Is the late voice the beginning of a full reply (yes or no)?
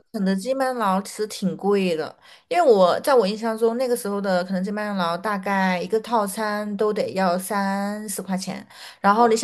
no